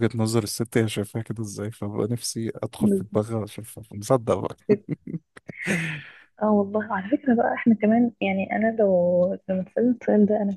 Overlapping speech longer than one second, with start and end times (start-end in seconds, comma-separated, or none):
none